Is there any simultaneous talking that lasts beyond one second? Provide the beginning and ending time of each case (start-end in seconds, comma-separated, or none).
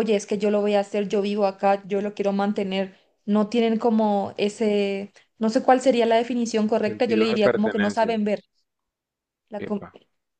6.8-8.2